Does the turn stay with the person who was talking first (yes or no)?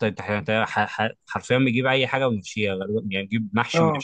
no